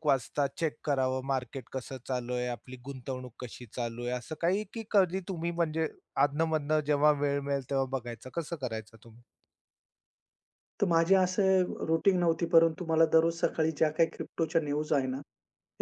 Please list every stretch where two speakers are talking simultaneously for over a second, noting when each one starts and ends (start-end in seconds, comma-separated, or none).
none